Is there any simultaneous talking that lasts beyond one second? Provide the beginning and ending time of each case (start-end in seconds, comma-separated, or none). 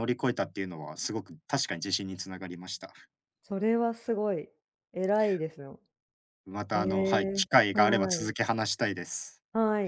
6.7-8.3